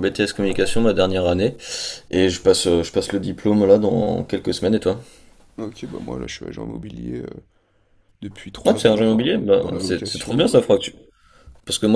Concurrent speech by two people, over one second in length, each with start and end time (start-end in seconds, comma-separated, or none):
8.6-10.6